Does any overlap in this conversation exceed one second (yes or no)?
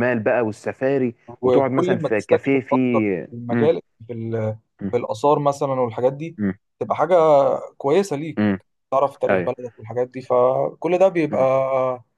yes